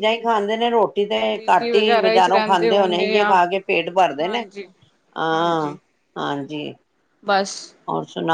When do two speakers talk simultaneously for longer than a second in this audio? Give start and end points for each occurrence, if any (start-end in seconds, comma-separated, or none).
1.3-3.4